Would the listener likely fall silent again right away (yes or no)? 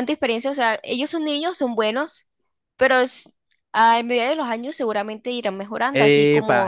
no